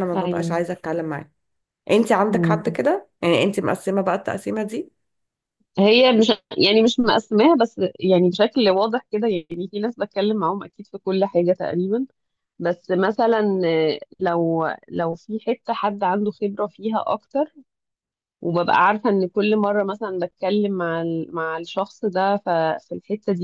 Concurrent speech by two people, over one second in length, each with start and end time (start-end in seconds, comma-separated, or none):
none